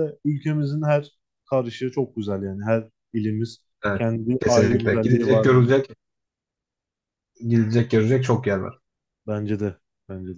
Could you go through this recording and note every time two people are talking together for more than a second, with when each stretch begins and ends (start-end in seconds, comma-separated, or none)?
4.0-5.7